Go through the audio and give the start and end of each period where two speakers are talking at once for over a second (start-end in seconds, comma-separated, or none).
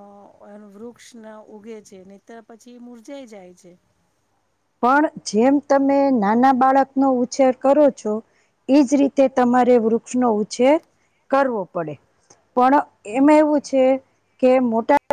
none